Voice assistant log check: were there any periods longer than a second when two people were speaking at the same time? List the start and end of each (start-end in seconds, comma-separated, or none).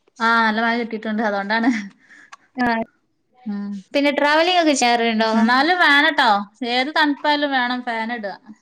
none